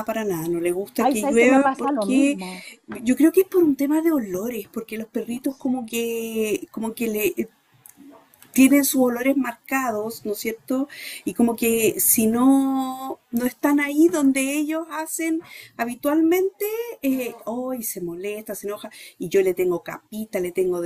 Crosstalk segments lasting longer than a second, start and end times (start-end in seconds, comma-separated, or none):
1.0-2.4